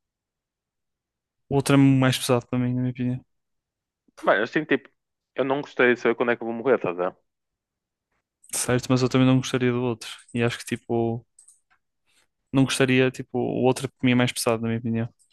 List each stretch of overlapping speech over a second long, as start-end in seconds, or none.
none